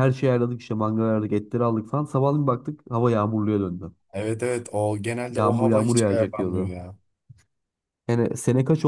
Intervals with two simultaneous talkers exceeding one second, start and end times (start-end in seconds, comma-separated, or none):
5.4-6.8